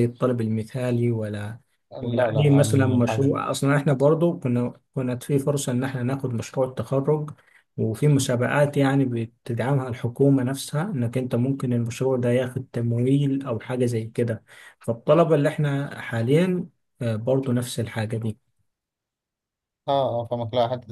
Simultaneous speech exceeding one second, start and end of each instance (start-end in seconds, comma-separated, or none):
2.0-3.3